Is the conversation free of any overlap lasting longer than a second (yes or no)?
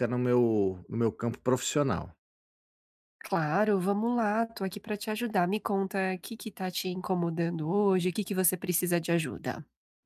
yes